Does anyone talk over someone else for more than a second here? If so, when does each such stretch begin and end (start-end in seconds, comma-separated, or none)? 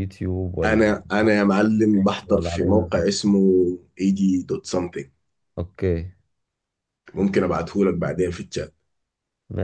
1.8-3.1